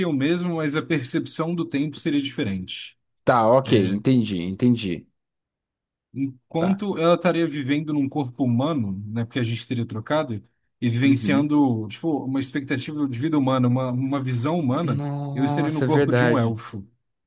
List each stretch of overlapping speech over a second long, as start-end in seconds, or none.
14.7-16.6